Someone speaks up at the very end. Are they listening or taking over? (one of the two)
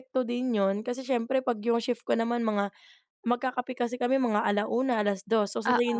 listening